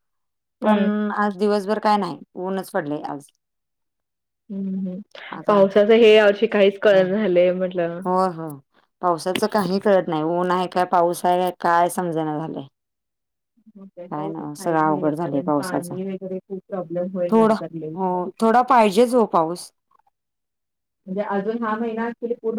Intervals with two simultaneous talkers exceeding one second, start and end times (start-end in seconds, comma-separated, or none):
14.1-15.9